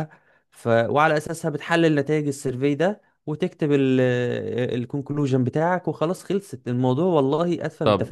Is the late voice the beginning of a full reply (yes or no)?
yes